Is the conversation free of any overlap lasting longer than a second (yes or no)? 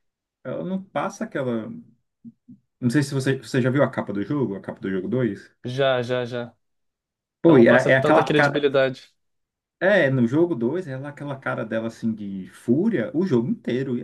no